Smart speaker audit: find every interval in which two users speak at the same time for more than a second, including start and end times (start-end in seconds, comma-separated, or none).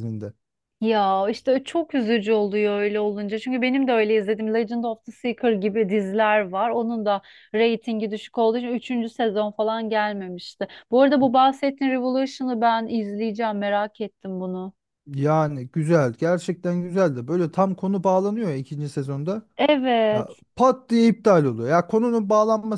none